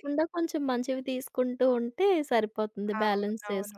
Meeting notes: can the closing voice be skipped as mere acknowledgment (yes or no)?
no